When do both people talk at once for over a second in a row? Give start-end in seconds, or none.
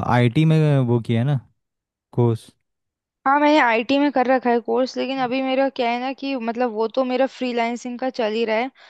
none